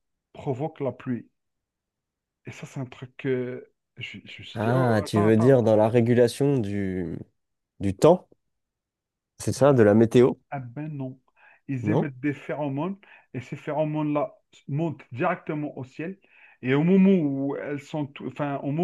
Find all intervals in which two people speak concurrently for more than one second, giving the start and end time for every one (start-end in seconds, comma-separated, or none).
4.5-5.8